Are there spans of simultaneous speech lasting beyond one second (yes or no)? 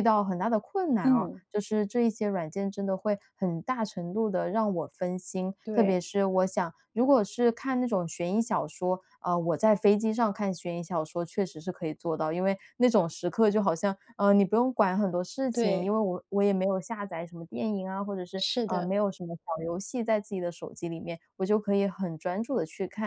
no